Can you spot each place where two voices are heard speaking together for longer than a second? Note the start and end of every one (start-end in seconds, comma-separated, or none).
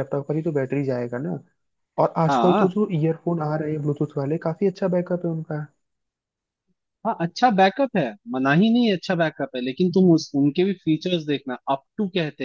none